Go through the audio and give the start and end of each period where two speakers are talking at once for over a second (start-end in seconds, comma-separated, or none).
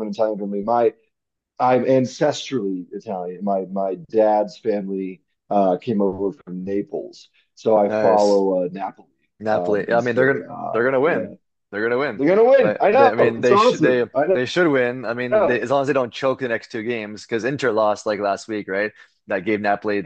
9.5-11.3, 12.1-14.4